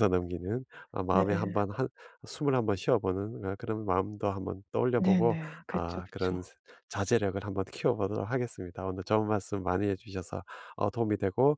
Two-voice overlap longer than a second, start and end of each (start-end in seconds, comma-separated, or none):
5.0-6.5